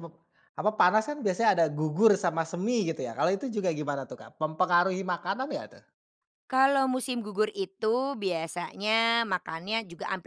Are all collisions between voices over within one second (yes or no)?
yes